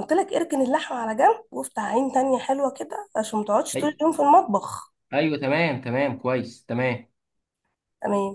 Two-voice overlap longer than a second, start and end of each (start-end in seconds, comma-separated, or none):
none